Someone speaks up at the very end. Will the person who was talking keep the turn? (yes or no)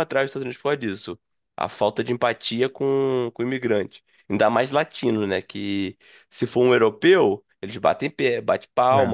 yes